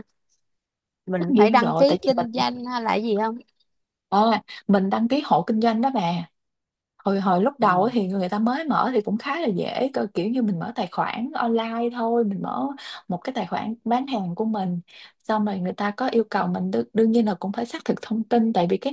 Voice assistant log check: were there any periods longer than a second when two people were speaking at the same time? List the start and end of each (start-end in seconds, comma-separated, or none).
1.1-2.5